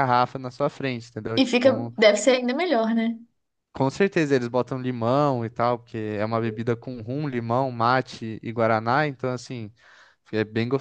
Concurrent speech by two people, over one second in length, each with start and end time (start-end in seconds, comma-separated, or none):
none